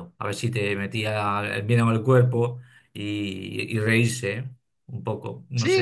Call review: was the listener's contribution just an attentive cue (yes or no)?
no